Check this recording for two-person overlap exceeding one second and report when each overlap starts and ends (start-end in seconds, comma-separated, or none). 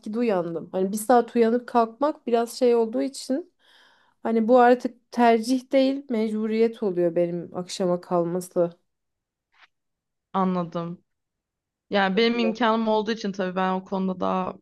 none